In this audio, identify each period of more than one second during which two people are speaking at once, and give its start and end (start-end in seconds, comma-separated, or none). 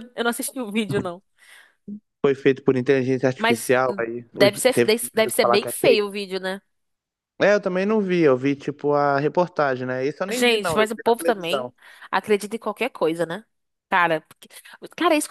3.4-5.7, 10.3-11.7